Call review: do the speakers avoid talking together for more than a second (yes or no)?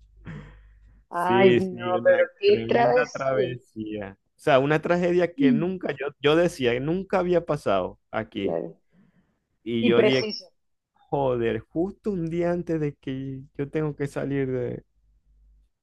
no